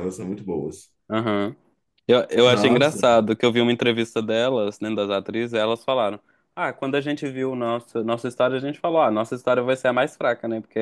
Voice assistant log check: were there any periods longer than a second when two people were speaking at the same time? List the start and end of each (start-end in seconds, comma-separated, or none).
none